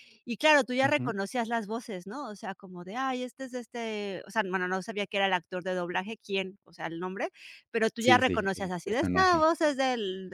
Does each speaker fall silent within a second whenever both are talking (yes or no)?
no